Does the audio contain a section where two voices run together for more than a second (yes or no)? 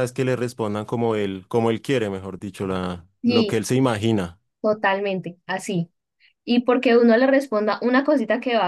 no